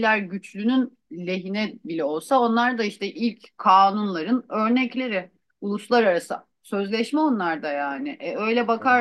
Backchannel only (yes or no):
yes